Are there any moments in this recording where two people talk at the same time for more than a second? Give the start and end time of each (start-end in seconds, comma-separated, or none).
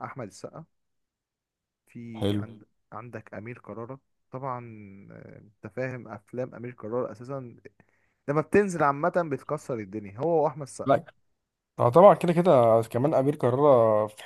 none